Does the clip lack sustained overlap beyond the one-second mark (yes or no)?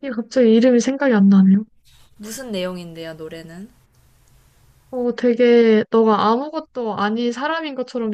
yes